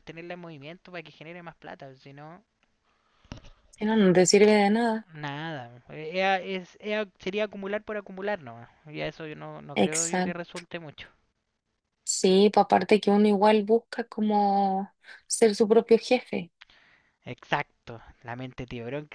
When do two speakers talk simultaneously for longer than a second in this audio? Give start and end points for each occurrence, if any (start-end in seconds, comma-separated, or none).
none